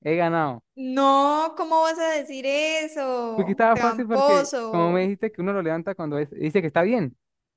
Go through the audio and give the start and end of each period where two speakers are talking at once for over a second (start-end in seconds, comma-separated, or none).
3.3-5.1